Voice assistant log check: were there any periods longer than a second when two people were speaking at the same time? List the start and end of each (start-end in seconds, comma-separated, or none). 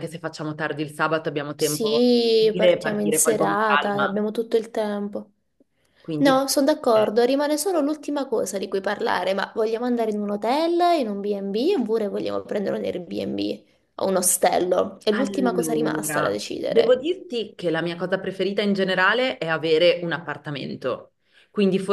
1.6-4.2, 15.1-17.0